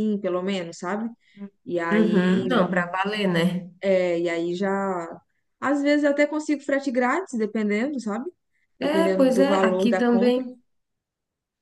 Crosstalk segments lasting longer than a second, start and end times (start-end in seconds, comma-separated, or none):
8.8-10.4